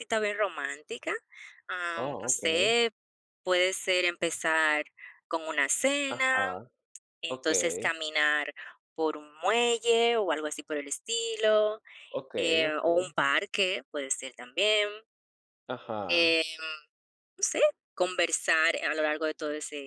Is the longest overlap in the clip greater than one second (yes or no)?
no